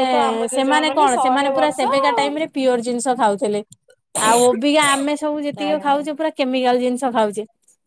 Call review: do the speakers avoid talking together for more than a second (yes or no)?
no